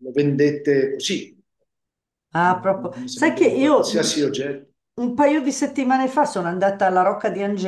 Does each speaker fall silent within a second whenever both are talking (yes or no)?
no